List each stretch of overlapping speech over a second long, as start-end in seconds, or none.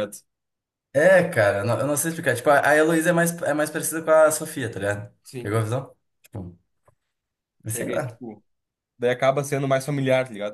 none